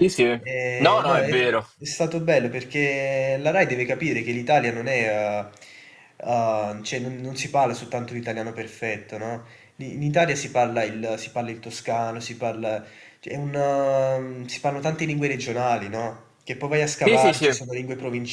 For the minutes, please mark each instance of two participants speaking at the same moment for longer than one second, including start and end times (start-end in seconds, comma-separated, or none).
none